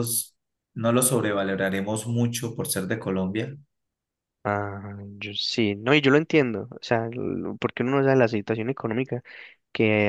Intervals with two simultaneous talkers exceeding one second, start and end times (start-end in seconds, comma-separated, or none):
none